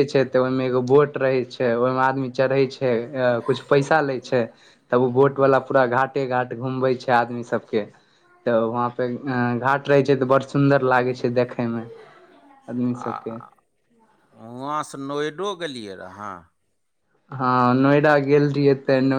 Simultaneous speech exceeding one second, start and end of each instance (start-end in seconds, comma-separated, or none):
none